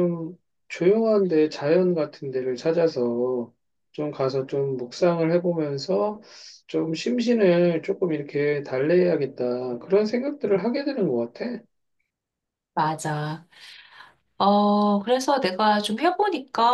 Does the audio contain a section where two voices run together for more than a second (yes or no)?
no